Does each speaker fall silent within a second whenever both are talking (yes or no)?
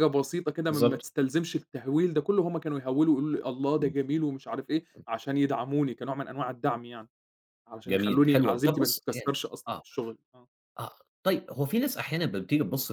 no